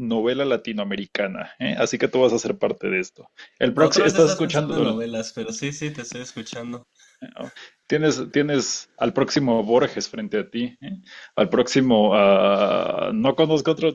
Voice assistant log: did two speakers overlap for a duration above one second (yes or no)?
yes